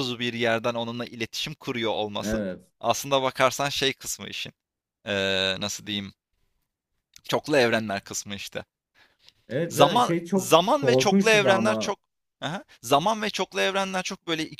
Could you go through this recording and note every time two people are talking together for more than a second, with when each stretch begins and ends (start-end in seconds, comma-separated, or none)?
9.7-11.9